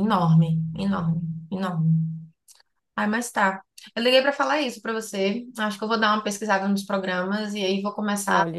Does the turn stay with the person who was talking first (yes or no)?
no